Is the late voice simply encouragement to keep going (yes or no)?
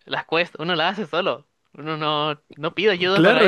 no